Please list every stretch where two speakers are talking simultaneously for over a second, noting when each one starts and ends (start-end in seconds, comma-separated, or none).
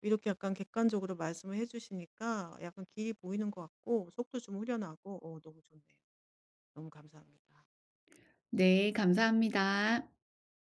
none